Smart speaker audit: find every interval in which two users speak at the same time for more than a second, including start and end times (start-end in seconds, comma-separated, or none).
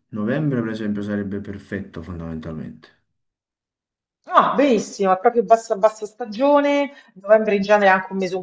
none